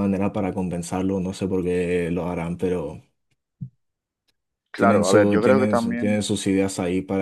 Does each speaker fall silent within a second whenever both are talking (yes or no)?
no